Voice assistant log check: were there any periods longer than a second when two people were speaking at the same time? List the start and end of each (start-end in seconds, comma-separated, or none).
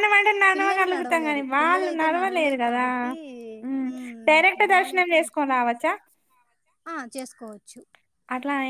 0.5-1.9